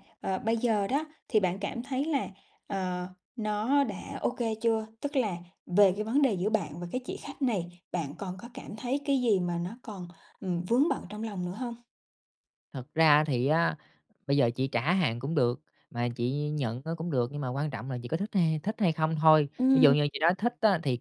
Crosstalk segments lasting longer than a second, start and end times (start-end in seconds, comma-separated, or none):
none